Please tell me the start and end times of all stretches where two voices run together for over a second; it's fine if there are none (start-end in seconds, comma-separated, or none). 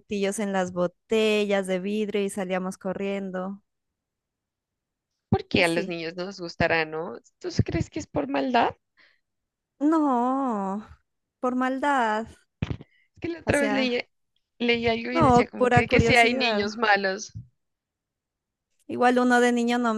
15.1-16.7